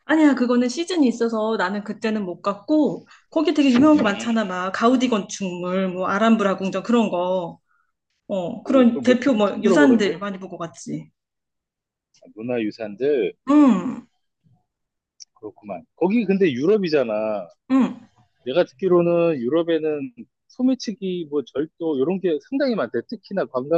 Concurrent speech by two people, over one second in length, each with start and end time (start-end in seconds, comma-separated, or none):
8.6-10.1